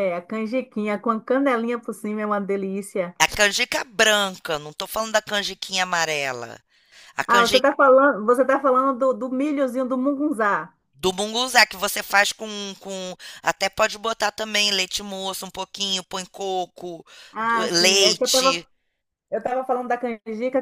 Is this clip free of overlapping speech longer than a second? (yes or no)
no